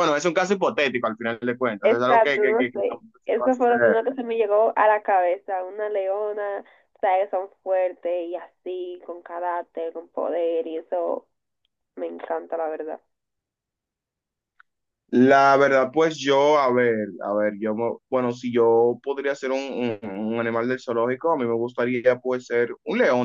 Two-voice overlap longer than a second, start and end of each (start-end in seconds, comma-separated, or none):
1.8-4.0